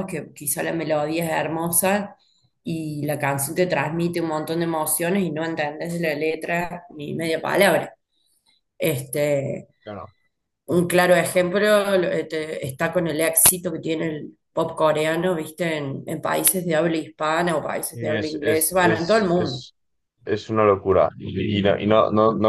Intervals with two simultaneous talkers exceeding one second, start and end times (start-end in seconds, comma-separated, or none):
17.9-19.6